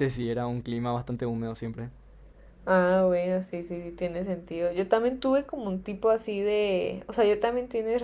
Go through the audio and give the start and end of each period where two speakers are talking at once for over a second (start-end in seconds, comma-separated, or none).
none